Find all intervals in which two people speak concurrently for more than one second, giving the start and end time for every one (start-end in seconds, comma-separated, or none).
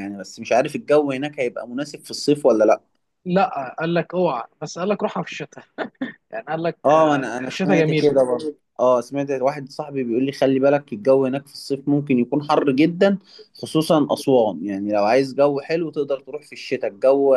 6.8-8.2